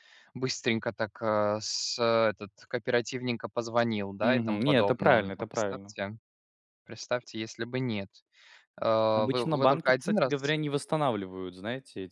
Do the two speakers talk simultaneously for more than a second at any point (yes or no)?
yes